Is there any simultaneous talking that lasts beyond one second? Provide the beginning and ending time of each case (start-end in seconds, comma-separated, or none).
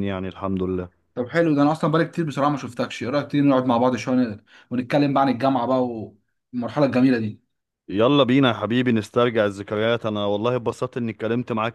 none